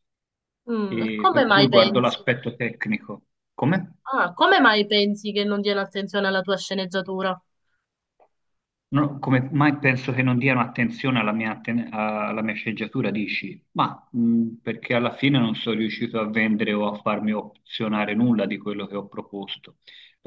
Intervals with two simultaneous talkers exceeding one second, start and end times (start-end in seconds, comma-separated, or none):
0.9-2.3